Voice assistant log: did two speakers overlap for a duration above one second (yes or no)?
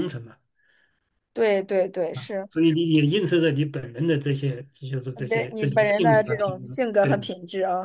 yes